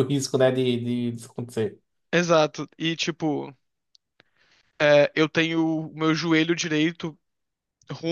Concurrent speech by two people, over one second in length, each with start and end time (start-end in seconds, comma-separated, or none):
none